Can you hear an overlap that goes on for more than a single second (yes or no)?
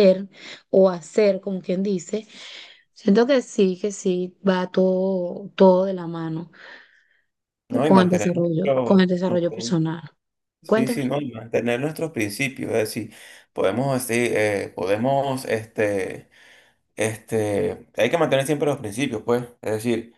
yes